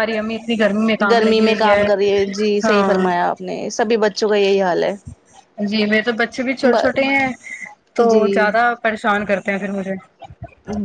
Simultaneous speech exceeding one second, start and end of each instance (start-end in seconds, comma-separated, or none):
none